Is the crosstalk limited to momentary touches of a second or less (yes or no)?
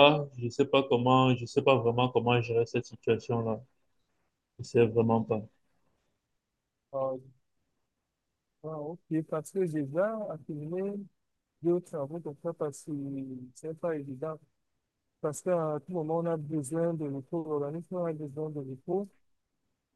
yes